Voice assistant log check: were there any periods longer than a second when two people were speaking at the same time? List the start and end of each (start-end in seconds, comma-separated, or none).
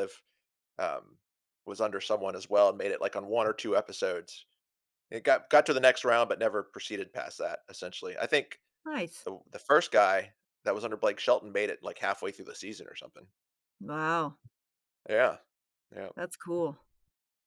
none